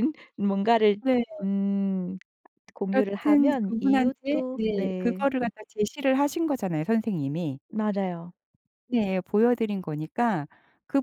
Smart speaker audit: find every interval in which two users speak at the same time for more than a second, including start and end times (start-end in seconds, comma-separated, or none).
2.9-5.3